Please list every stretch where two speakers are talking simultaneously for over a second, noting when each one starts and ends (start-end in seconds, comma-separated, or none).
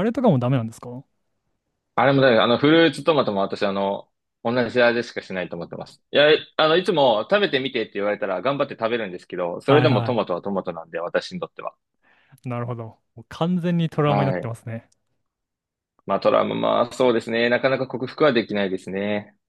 none